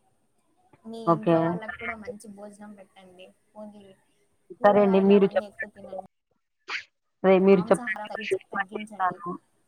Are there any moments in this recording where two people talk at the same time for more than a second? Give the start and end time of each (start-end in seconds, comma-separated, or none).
7.6-9.2